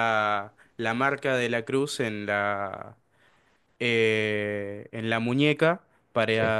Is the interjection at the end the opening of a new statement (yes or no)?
no